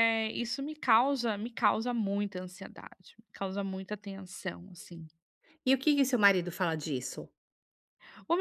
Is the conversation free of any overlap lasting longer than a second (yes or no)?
yes